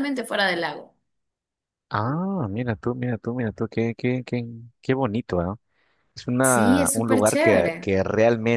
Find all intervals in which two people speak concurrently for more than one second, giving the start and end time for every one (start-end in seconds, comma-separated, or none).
6.4-7.9